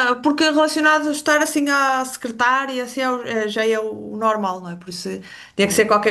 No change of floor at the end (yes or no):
yes